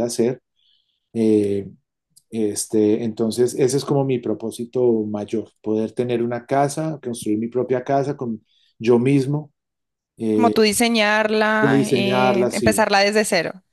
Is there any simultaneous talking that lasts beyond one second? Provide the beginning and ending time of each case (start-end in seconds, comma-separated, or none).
11.6-12.9